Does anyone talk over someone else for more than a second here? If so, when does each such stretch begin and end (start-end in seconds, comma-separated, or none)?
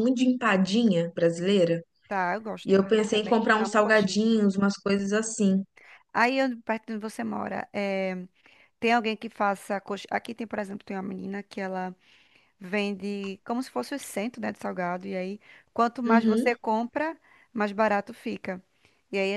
2.6-4.2